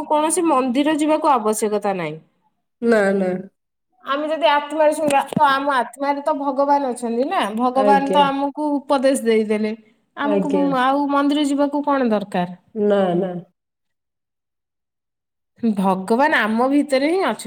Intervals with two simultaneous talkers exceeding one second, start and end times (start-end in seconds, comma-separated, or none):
none